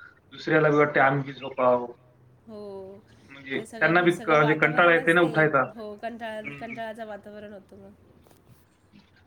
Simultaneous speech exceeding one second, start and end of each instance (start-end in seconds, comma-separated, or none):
3.5-5.3